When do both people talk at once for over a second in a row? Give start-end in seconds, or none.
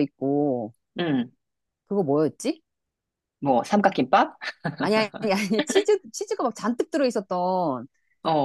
none